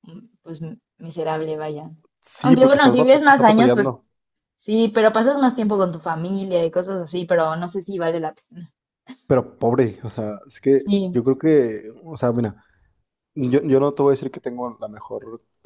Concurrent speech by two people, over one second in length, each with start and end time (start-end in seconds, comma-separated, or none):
2.4-4.0